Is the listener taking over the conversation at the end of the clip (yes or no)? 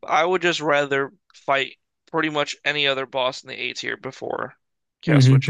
yes